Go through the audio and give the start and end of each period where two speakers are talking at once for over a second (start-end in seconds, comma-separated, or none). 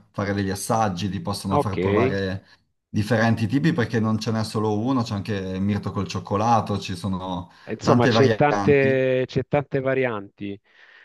7.7-9.0